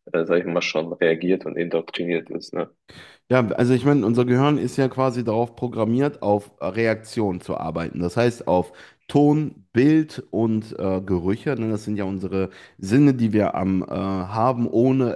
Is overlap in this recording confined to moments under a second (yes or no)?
yes